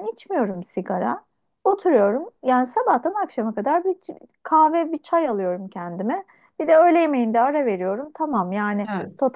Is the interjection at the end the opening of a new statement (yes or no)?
no